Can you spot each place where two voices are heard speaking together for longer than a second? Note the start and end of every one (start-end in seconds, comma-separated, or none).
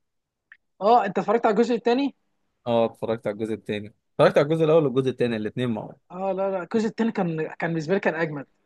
none